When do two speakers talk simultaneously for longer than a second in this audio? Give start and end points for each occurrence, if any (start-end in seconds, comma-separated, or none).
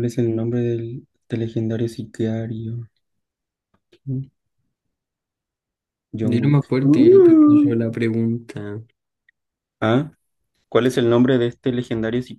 6.2-7.7